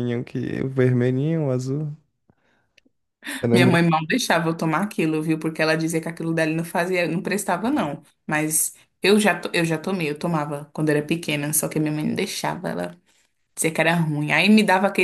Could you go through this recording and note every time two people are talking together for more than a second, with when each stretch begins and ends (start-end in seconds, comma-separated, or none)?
none